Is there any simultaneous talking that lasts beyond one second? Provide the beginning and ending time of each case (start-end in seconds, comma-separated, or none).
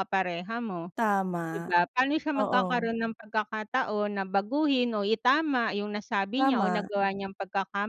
none